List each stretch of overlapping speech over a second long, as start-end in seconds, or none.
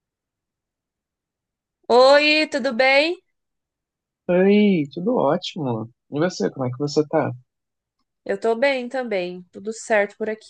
none